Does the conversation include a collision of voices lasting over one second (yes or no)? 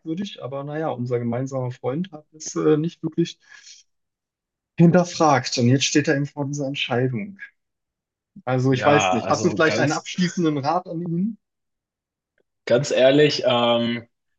yes